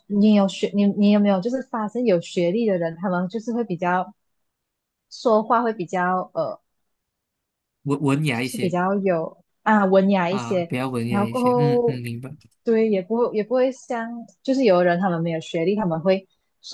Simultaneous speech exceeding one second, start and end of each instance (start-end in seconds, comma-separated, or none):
10.3-12.0